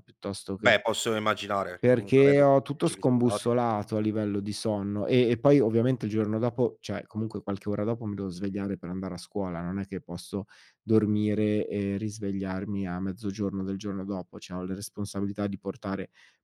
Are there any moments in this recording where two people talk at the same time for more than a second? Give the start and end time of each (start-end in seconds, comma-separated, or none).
1.8-3.5